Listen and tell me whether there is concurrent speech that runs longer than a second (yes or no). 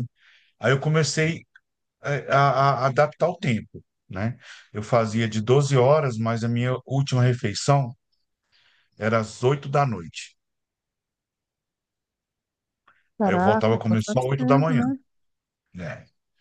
yes